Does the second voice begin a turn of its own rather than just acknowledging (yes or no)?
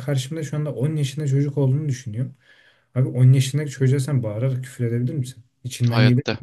yes